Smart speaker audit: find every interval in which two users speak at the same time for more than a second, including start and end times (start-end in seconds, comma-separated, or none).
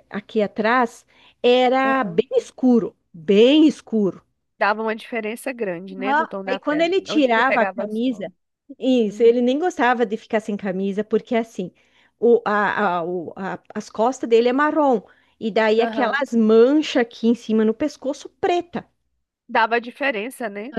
6.0-8.3